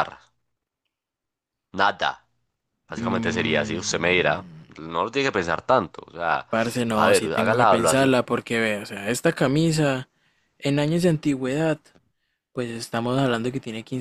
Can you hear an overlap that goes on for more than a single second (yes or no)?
yes